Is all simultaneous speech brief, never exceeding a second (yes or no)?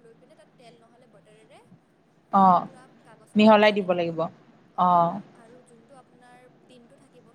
no